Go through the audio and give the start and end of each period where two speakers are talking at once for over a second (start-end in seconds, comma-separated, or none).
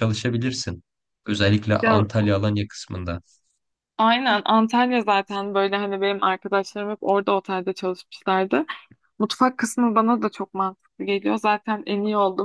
none